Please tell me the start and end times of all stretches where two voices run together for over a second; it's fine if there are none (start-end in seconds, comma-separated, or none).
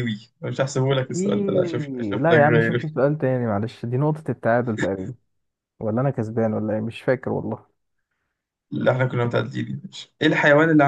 0.9-2.9